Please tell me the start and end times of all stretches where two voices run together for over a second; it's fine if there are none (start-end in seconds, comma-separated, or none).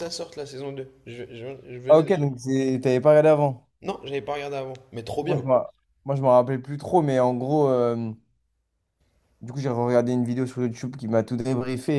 none